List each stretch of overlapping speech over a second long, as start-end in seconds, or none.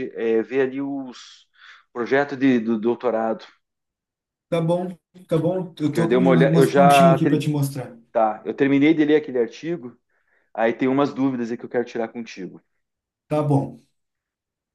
5.9-7.5